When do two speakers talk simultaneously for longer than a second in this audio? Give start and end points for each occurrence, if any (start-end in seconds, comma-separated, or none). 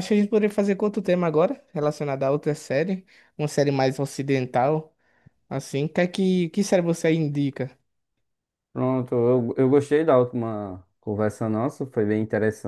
none